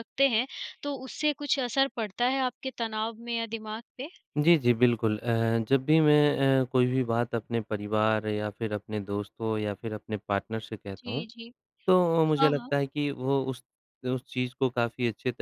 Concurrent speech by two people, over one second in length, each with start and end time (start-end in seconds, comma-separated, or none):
none